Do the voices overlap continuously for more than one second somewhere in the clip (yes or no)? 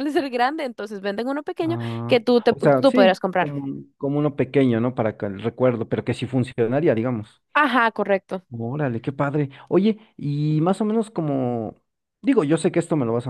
yes